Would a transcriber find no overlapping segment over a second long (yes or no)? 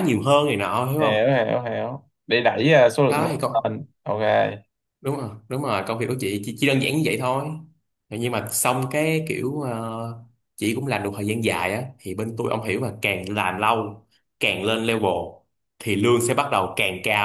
yes